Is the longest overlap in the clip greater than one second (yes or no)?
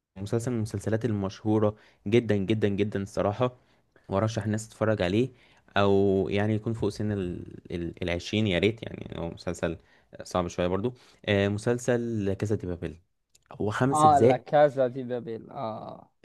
no